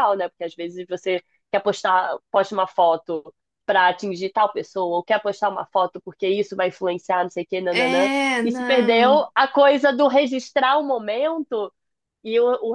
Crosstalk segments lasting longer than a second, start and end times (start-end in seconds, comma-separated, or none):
7.7-9.2